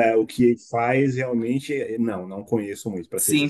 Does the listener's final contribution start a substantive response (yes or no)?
yes